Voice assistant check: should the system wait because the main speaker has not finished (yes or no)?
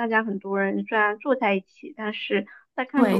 no